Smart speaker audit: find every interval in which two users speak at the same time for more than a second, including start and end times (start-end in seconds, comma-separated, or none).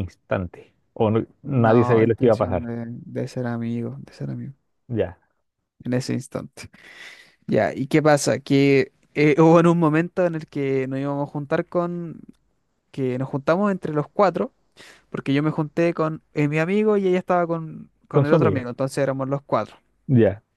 1.4-2.7